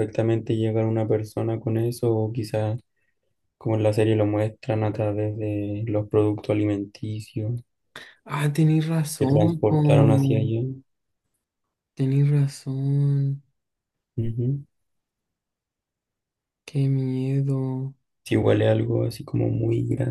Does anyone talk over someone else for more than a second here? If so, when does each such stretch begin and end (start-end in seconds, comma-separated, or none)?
9.2-10.4